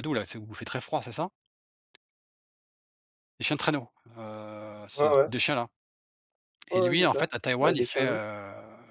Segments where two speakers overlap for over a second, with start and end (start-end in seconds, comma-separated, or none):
6.7-8.2